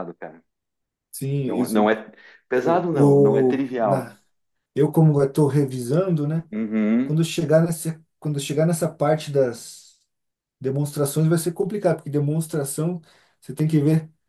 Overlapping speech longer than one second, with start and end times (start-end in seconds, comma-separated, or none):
2.5-4.2